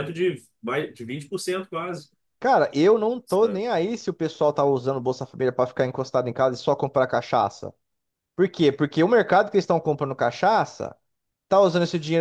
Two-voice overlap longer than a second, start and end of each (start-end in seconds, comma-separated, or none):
none